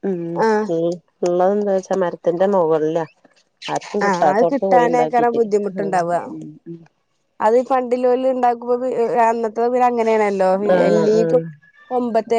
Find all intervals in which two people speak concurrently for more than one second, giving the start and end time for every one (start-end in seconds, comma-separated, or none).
4.1-5.4